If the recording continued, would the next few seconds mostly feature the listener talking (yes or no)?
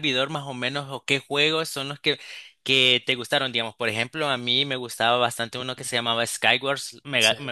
no